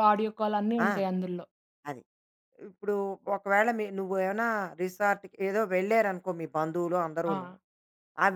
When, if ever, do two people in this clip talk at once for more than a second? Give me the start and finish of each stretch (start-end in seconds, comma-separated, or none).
none